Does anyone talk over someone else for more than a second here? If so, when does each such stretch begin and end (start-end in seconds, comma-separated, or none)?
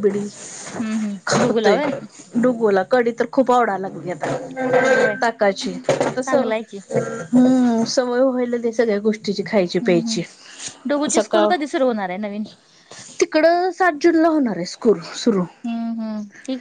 none